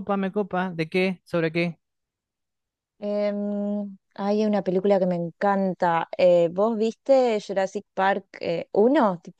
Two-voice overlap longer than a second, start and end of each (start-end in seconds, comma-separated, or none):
none